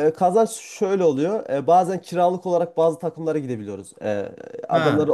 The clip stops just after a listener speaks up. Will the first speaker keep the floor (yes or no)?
yes